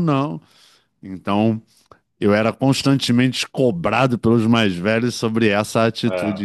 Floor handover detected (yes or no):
no